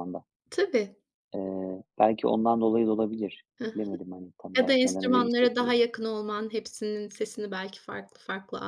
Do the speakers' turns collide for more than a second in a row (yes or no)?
yes